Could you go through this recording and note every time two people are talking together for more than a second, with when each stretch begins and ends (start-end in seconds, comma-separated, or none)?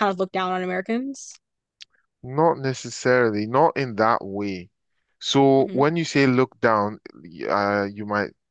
none